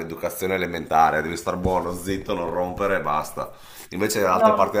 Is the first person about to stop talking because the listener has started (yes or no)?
no